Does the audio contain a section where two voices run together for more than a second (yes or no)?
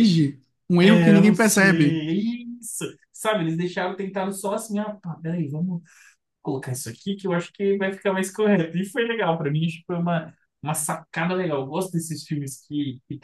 yes